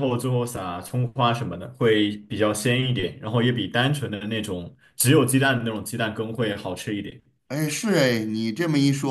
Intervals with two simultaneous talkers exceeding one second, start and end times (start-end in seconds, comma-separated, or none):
none